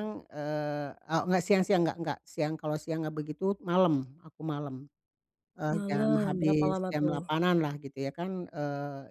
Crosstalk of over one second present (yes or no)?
yes